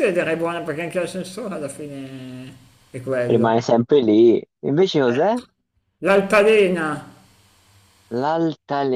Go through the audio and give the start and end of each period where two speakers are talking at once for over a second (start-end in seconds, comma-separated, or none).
none